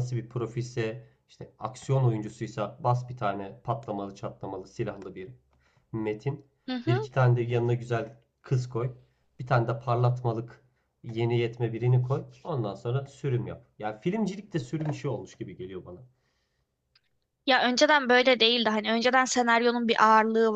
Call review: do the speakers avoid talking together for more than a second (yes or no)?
yes